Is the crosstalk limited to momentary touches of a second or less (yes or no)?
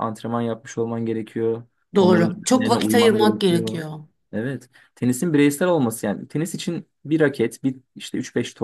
no